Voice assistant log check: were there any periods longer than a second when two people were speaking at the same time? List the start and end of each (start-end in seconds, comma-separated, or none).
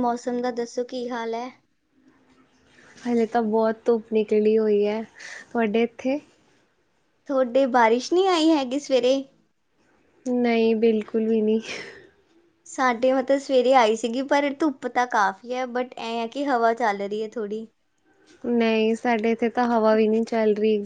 none